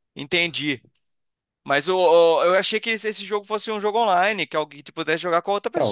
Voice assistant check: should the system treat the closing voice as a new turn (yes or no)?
yes